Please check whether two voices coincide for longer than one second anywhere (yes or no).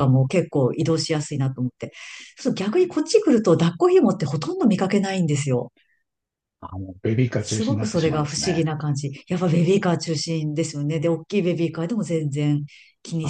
yes